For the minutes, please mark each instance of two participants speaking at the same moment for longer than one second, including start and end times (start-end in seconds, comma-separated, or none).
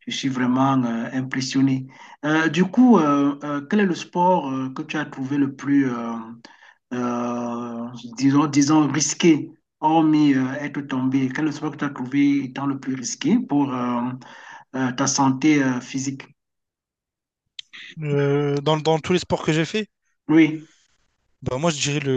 none